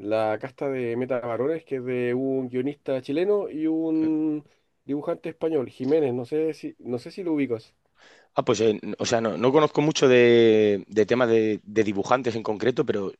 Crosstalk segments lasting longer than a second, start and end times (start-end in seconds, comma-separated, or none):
none